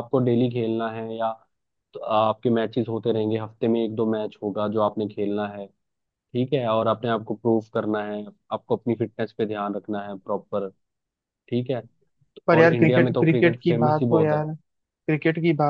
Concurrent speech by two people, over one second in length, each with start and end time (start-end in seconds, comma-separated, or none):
12.6-14.4